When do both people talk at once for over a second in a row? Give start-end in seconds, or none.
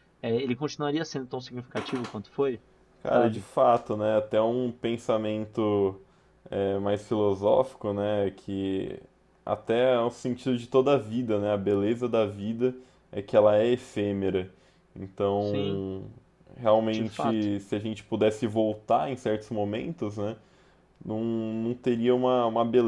none